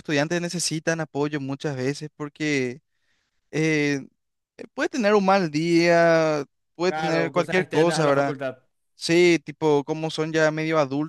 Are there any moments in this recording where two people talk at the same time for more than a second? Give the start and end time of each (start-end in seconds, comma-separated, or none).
6.9-8.3